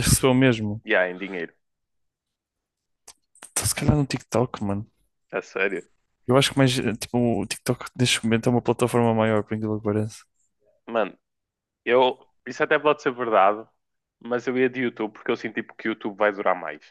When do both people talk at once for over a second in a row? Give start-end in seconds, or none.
none